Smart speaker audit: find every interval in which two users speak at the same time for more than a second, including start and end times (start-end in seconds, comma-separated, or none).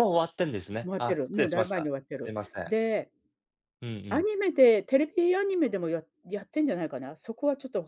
0.8-2.8